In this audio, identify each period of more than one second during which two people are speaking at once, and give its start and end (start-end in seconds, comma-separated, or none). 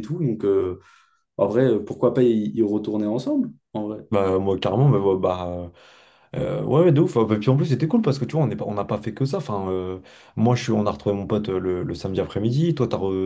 none